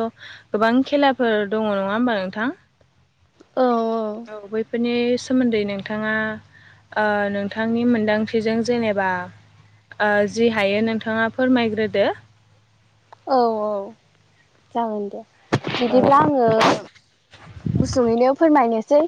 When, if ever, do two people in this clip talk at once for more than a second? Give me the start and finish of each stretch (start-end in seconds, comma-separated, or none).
none